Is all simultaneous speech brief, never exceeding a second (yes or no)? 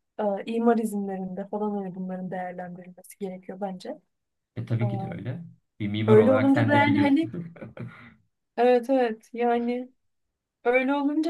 no